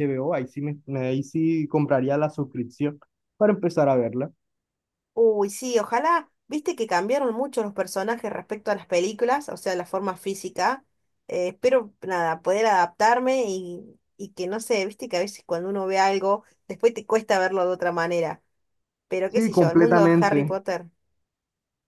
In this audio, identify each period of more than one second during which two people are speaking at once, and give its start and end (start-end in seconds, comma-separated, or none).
19.3-20.6